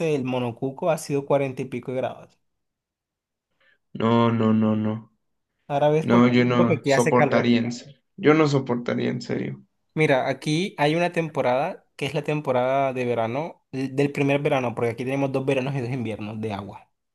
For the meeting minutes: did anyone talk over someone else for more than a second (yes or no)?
yes